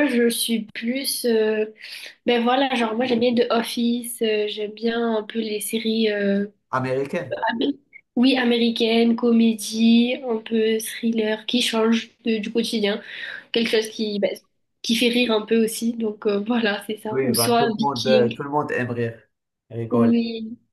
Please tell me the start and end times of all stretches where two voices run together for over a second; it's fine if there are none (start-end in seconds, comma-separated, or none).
17.1-18.4